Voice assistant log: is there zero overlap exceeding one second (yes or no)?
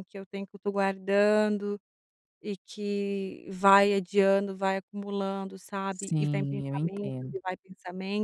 no